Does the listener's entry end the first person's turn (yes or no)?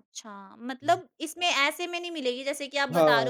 yes